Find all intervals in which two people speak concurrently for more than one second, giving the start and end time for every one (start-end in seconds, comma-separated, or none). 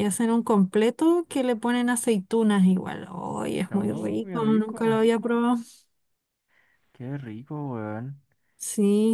3.7-5.0